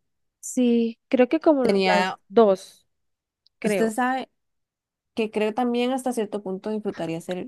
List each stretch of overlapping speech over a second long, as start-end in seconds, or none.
none